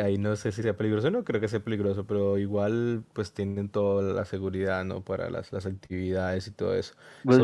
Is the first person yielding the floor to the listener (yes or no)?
no